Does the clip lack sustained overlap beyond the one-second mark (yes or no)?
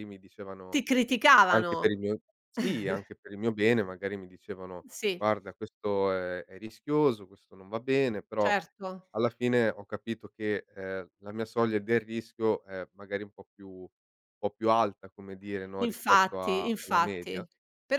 no